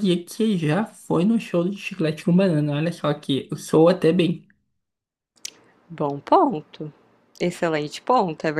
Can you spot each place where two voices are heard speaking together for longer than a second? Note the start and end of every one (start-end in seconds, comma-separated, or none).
none